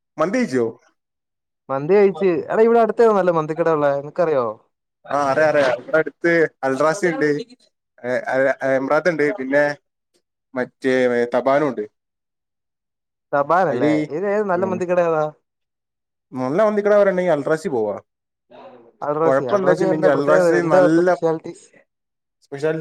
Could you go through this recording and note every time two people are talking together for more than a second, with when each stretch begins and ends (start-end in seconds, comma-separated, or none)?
19.2-21.2